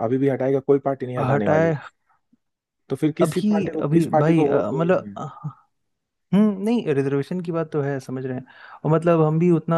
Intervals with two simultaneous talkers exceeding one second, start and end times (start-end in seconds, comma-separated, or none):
3.2-5.2